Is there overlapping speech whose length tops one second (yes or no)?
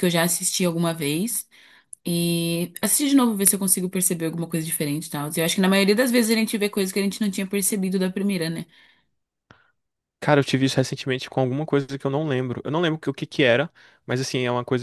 no